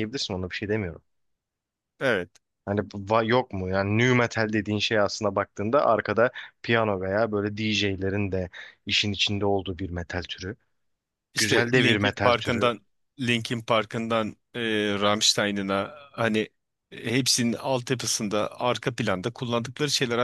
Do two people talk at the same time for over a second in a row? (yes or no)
yes